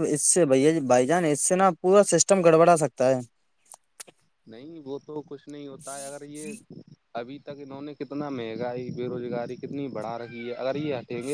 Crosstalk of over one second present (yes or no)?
no